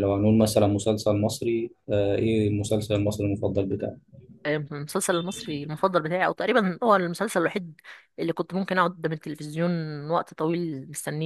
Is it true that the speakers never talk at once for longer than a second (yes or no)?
yes